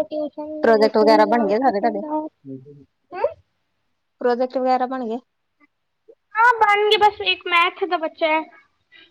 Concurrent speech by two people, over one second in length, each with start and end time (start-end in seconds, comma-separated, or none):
0.6-2.0